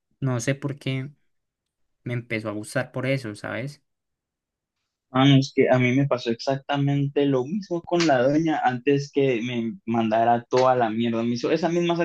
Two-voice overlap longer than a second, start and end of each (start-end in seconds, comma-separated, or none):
none